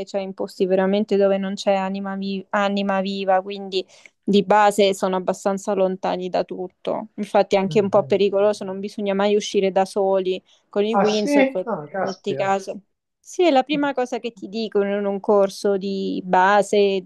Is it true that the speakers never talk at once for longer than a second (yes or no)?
no